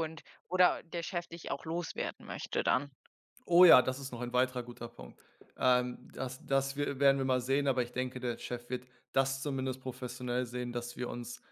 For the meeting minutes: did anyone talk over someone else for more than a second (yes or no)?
no